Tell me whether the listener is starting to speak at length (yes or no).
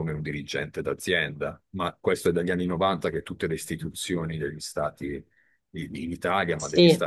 no